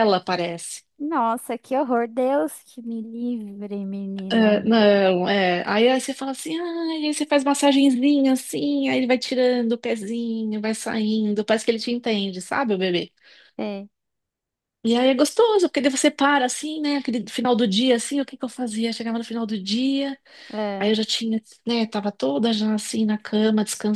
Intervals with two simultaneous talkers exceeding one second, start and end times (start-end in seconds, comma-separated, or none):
none